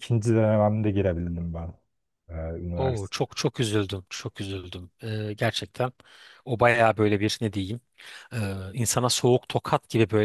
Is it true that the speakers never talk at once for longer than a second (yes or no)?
yes